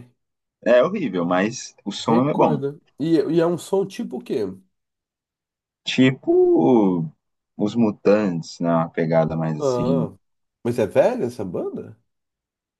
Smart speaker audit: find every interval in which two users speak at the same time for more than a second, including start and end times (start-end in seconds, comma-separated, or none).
none